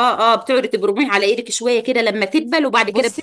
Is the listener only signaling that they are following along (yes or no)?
no